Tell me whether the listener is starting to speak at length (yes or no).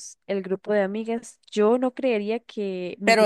yes